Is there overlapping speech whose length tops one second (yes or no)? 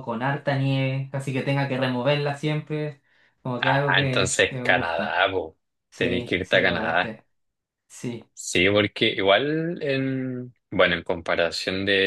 yes